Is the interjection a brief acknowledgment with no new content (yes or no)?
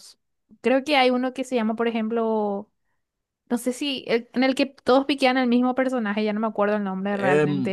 no